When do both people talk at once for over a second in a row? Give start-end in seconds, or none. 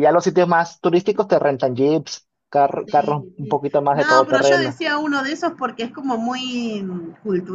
2.9-4.8